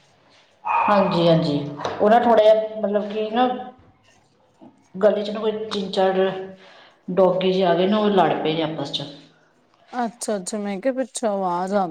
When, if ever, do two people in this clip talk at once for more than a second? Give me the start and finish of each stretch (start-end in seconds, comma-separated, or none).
none